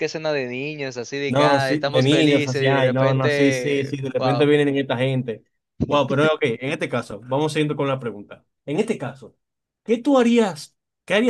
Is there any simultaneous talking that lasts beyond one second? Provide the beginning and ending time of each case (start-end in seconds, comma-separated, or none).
1.3-4.5